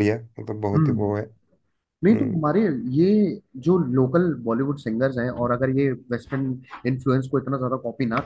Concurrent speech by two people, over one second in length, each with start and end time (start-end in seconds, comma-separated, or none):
none